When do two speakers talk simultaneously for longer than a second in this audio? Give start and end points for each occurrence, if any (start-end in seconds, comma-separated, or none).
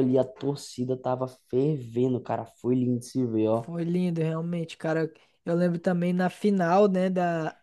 none